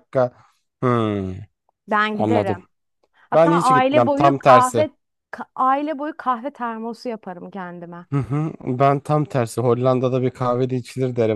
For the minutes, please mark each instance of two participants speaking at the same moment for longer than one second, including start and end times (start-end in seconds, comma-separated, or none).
3.3-4.9